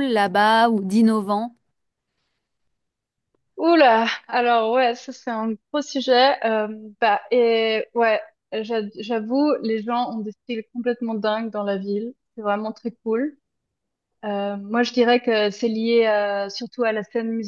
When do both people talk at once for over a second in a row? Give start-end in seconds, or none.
none